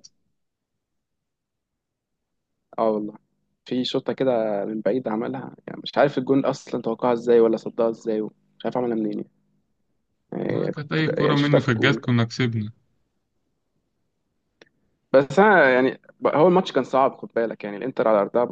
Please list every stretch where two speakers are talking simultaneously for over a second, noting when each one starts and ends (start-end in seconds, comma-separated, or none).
10.6-12.0